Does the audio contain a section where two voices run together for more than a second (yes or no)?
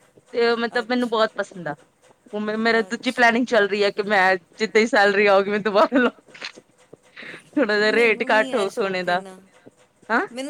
yes